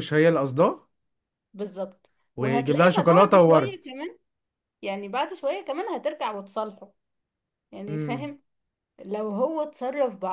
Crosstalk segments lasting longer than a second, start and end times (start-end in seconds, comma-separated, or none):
2.4-3.8